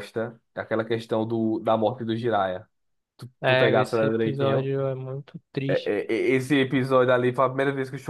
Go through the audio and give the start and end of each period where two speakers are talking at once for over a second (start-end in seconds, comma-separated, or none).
3.4-4.7